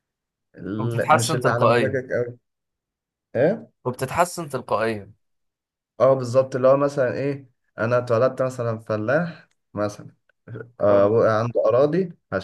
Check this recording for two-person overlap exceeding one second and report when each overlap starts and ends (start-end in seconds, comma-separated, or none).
0.8-2.0